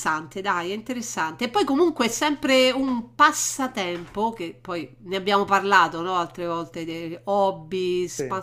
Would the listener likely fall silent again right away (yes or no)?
yes